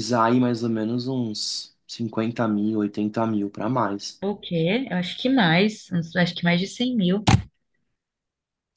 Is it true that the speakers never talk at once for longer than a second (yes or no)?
yes